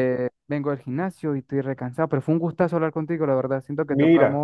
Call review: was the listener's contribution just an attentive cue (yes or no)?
yes